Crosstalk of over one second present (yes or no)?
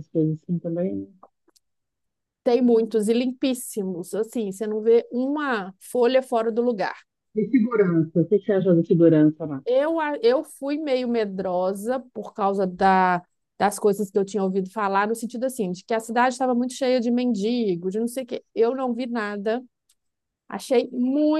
no